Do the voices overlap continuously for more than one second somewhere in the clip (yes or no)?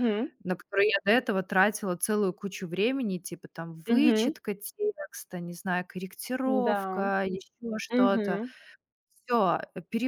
no